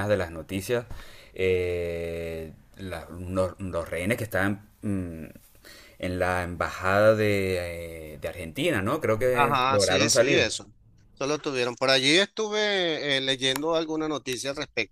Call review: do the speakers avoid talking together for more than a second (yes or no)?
no